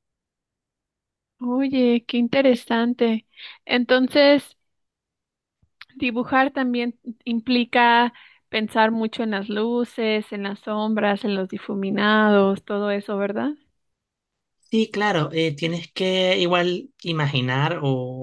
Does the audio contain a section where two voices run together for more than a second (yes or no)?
no